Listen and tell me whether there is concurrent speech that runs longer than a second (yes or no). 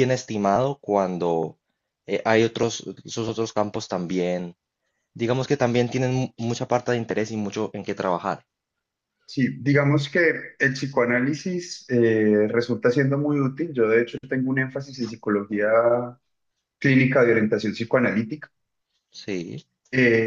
no